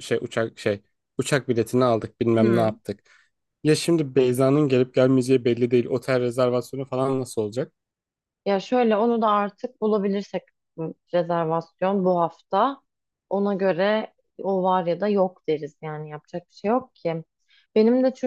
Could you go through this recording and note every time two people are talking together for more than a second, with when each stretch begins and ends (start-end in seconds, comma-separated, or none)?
none